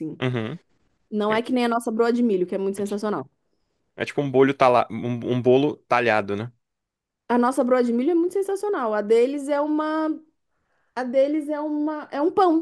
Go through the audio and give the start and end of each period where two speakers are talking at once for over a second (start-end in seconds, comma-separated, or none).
none